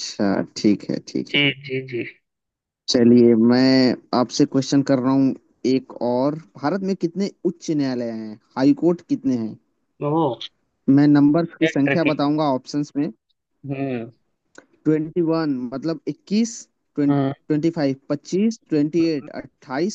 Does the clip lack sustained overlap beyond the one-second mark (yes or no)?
yes